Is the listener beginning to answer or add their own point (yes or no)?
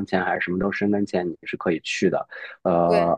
no